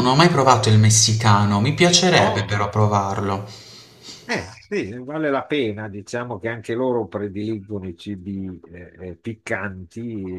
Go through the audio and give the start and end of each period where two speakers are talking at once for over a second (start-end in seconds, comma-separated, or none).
none